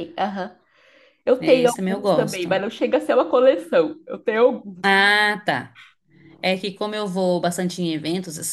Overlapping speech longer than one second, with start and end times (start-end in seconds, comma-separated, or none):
1.4-2.6